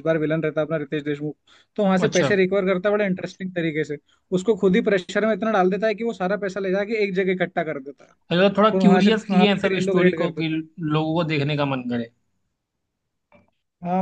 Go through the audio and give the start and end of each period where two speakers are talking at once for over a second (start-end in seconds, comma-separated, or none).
8.7-10.6